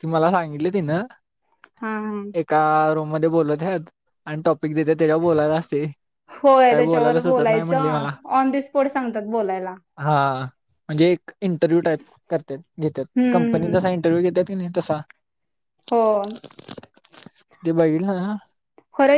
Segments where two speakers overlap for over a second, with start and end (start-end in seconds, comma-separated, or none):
6.7-8.1